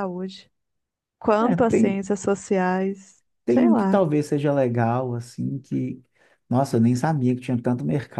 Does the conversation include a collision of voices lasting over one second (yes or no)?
no